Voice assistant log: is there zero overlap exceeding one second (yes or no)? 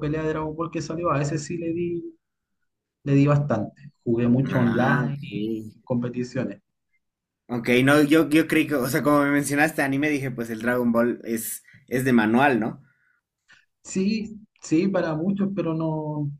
no